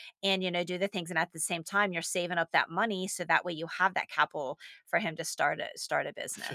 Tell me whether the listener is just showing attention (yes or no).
no